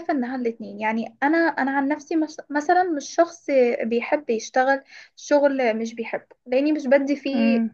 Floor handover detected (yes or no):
no